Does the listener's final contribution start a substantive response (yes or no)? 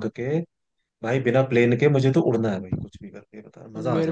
yes